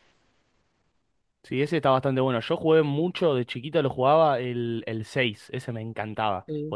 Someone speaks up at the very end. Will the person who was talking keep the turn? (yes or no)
yes